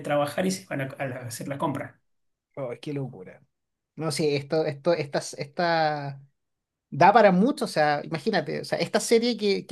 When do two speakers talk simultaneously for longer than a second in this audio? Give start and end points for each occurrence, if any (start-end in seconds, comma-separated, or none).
none